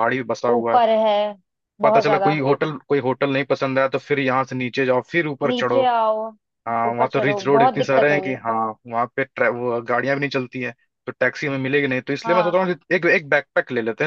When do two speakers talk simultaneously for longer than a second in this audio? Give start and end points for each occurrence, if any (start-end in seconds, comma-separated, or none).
6.9-8.3